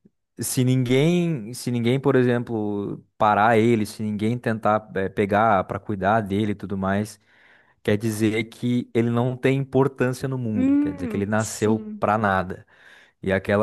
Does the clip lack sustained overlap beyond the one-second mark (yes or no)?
no